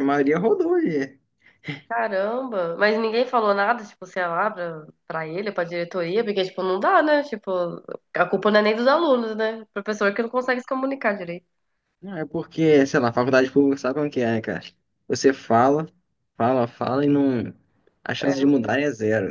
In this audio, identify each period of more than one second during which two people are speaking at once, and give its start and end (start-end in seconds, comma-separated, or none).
none